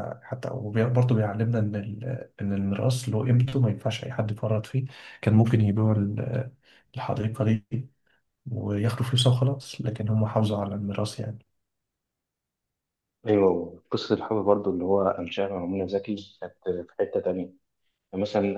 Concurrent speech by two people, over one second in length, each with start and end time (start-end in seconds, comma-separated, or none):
none